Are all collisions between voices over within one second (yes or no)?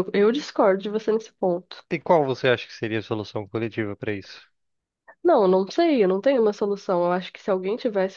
yes